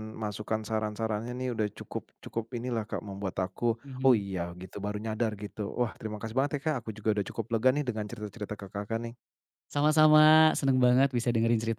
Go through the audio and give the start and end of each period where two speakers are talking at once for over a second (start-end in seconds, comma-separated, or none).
none